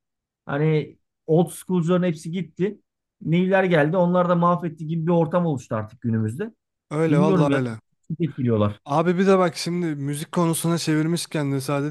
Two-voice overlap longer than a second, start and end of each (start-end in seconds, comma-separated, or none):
none